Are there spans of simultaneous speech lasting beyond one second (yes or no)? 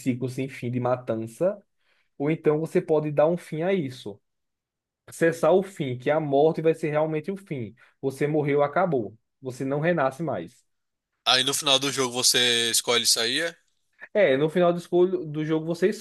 no